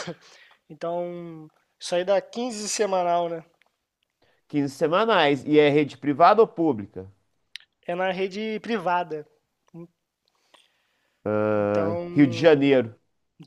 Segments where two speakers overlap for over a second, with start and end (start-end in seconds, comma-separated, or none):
11.5-12.7